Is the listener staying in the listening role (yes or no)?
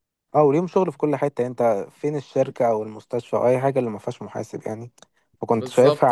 yes